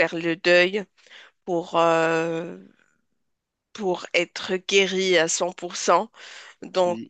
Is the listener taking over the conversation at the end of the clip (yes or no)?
no